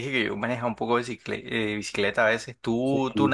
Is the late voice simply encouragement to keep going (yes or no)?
no